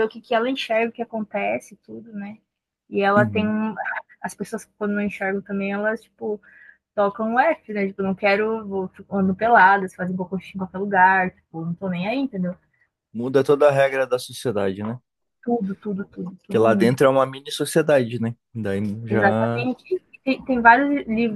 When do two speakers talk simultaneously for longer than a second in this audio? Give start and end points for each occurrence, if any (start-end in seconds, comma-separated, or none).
none